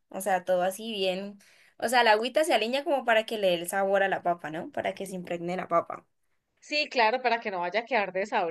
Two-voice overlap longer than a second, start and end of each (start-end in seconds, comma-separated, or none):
none